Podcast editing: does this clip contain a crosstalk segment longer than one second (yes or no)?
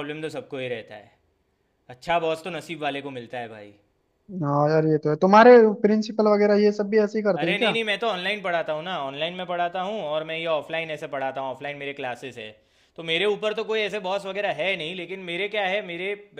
no